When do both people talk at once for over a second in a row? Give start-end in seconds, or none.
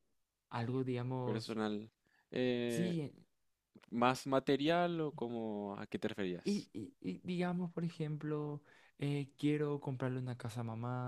none